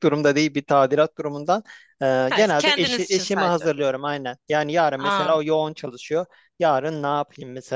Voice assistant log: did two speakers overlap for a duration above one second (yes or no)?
yes